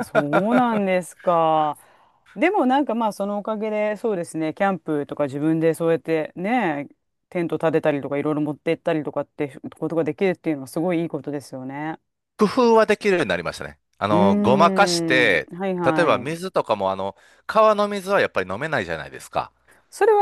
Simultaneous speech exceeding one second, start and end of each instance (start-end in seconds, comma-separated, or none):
14.1-16.4